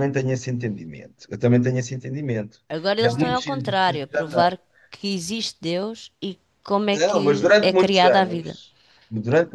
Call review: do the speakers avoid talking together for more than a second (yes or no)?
no